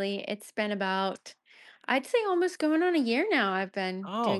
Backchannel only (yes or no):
no